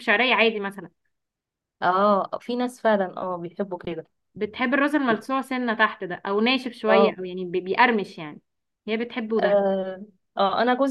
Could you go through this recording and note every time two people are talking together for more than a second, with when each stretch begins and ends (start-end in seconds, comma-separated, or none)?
none